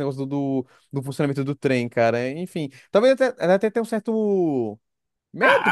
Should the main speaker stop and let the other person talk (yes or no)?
yes